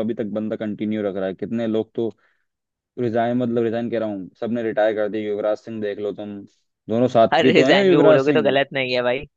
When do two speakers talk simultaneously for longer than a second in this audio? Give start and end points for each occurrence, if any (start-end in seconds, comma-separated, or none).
7.3-8.6